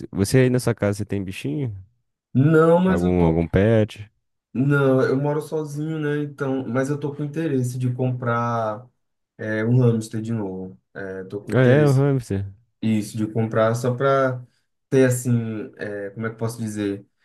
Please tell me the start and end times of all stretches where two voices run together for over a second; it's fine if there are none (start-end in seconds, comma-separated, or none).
none